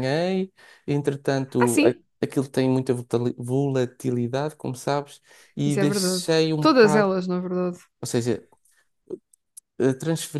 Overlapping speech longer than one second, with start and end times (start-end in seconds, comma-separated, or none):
5.7-7.1